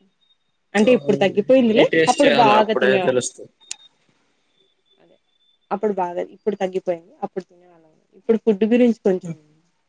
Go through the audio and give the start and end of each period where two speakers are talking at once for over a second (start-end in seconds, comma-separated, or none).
0.9-3.2